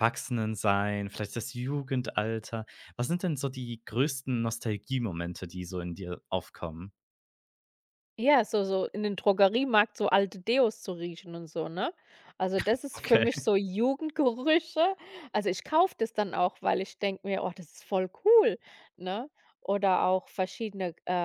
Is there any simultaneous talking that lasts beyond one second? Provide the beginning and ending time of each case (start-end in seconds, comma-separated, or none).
none